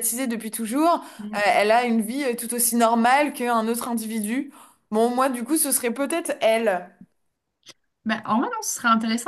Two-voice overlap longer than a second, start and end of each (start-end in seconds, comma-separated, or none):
none